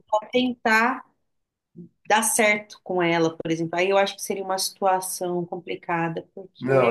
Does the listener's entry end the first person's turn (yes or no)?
yes